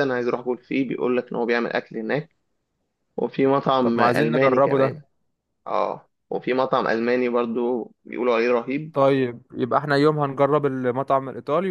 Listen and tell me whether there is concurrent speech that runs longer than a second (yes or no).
yes